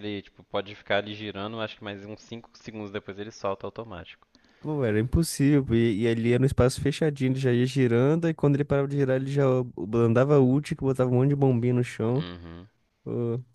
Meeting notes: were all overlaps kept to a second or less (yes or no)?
yes